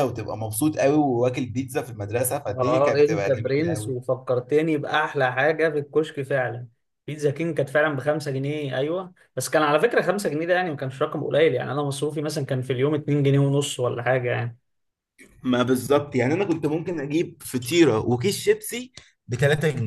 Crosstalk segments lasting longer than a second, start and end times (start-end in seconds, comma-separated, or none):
2.5-4.0